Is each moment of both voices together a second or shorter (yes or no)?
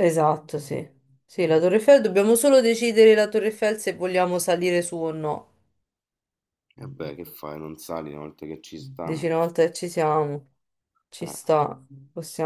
yes